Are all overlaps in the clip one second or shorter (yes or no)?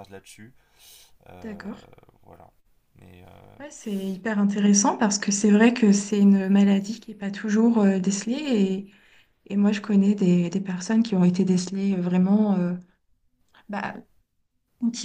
yes